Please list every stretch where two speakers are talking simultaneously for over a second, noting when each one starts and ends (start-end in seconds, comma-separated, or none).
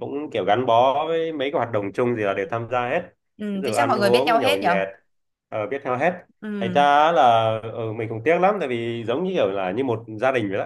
3.5-4.8